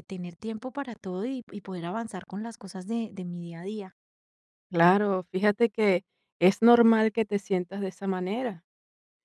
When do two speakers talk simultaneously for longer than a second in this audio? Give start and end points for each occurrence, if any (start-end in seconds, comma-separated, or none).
none